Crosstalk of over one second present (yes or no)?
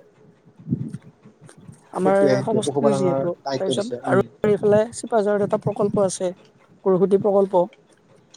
yes